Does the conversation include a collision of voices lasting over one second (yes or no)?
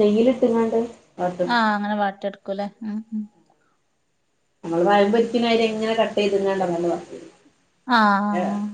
no